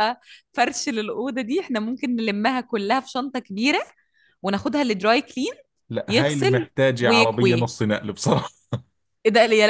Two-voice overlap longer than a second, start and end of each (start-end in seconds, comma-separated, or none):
6.1-7.6